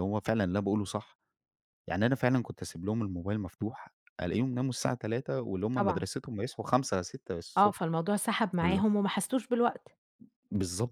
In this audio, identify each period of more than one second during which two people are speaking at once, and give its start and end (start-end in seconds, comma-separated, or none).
none